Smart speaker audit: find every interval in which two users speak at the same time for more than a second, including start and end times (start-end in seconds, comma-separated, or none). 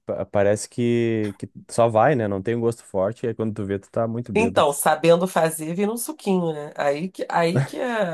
none